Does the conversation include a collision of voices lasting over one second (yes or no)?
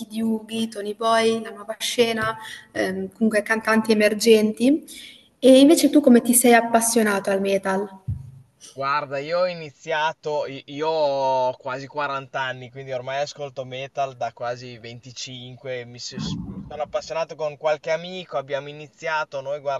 no